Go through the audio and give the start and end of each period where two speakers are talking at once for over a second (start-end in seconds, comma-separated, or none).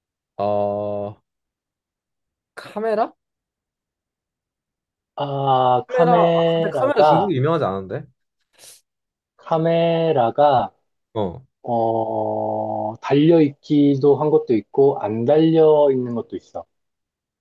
5.9-7.3